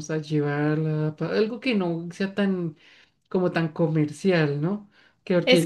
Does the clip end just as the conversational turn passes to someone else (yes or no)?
yes